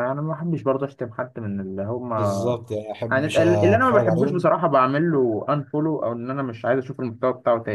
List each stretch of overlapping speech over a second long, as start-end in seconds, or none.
3.1-4.5